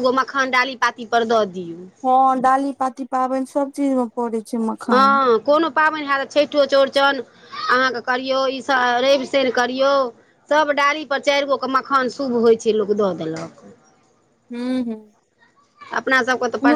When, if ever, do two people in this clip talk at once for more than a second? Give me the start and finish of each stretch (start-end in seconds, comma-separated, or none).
none